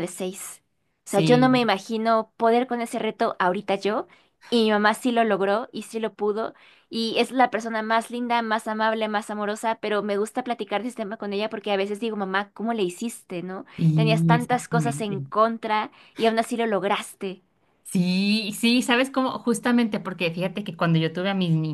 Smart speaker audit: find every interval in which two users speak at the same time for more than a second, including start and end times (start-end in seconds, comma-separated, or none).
13.8-15.2